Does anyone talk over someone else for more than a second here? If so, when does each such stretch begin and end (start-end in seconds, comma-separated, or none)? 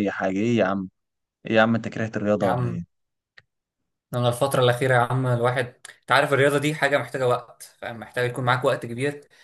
none